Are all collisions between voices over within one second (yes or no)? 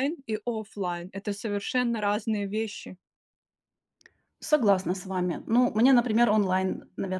yes